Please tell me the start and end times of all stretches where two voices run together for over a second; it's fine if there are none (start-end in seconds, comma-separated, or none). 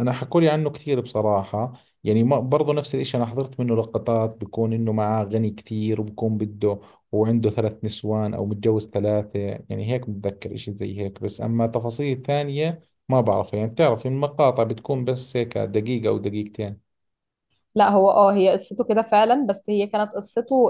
none